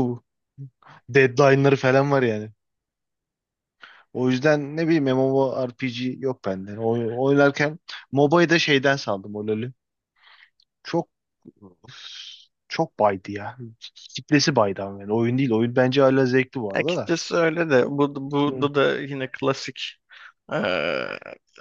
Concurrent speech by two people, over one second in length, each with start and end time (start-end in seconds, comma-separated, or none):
none